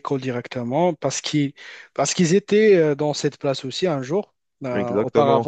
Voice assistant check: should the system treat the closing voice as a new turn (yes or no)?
no